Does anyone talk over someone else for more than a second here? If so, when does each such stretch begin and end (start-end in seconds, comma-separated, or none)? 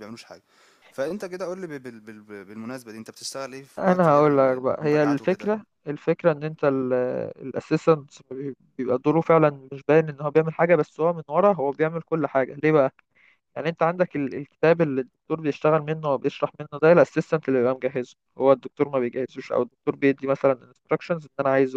3.8-5.5